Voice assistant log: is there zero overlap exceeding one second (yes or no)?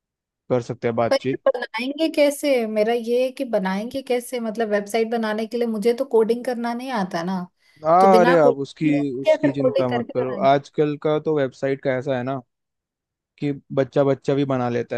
no